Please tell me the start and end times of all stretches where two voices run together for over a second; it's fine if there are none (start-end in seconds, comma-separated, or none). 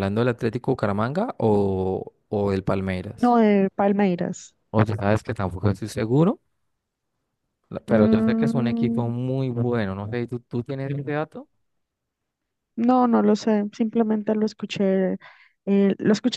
7.9-9.1